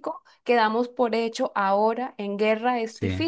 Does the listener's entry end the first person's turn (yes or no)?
yes